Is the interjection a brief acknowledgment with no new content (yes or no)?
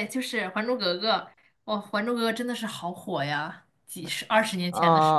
no